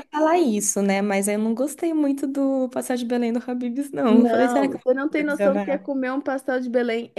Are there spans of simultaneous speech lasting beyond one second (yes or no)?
yes